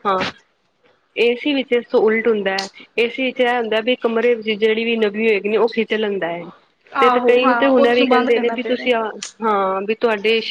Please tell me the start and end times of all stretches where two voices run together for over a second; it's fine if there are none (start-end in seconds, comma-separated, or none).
7.0-8.9